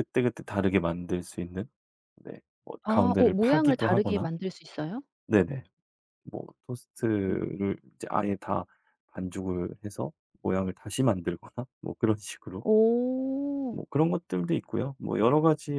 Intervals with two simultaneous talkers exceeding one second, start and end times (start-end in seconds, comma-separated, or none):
2.8-4.3